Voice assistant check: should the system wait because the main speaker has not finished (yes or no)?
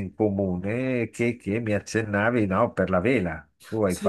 no